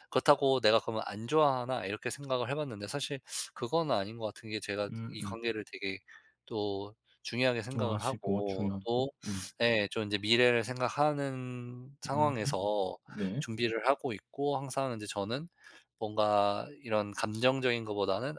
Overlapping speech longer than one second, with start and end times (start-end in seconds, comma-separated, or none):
7.7-9.1